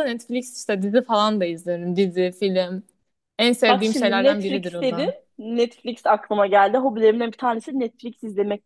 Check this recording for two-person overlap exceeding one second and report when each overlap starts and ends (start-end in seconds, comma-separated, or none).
3.7-5.1